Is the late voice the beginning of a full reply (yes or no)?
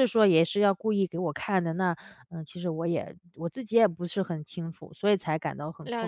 yes